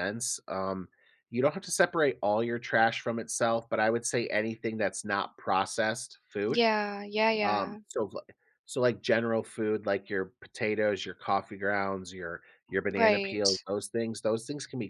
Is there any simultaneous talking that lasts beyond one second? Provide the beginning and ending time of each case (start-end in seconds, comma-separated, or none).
none